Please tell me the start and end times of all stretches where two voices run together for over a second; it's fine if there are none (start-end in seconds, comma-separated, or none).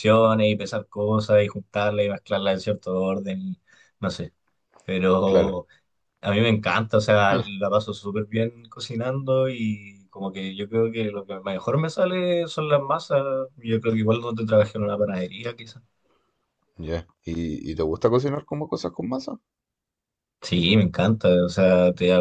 none